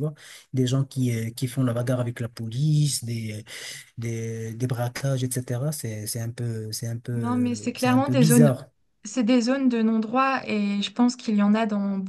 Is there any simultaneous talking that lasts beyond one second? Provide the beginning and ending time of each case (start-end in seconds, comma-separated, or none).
7.1-8.5